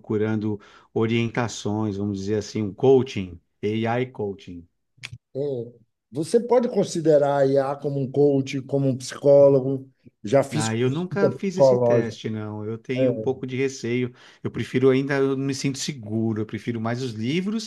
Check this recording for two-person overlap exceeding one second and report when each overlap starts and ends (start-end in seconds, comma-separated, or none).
10.5-12.2